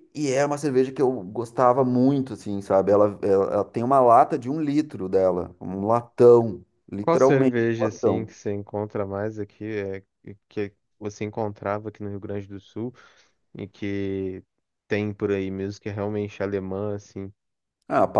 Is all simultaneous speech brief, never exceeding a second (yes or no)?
no